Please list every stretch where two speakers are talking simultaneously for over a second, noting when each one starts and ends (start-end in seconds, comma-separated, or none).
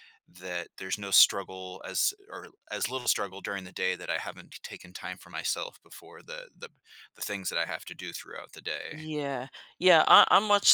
none